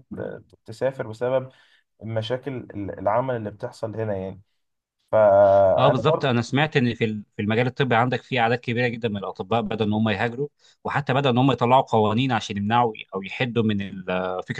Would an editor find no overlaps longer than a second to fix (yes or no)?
yes